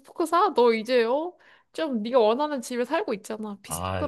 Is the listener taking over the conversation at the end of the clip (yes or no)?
yes